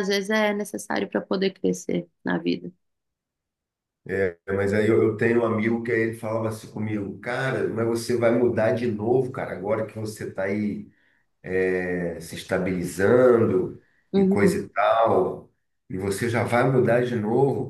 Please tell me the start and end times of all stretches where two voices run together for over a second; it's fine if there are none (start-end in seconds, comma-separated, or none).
none